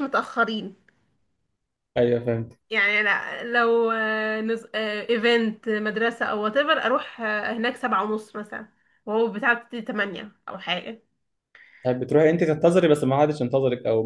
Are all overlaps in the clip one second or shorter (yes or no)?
yes